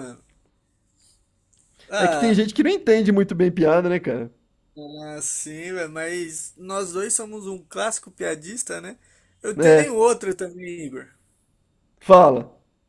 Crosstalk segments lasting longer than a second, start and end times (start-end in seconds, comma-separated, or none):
none